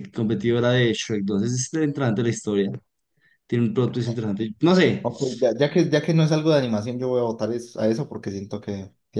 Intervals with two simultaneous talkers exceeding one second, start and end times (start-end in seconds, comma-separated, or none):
none